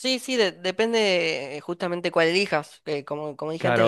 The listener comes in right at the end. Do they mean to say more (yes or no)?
no